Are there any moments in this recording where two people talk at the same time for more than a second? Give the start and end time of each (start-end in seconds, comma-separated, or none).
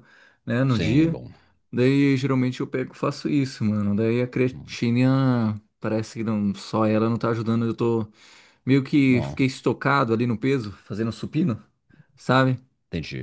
none